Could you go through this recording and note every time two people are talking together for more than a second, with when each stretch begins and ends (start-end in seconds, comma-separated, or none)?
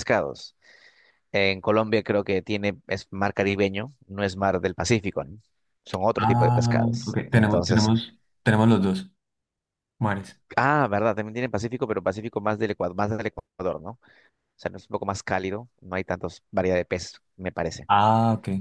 6.2-7.9